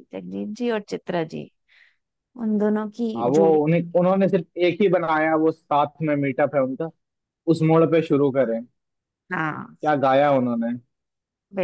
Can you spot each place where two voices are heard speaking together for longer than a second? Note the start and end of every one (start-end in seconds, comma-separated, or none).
none